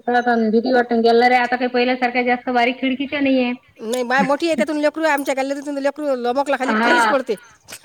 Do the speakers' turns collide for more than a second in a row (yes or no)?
no